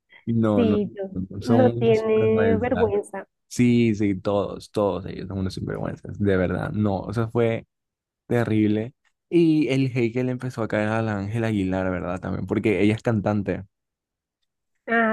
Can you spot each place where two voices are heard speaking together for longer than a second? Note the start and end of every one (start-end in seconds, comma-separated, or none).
1.5-2.9